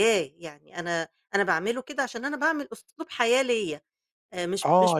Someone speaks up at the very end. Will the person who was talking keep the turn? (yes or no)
no